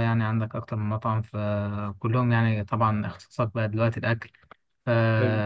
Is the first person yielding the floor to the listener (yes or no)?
no